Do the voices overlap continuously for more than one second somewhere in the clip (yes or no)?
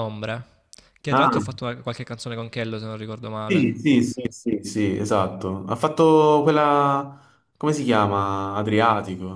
no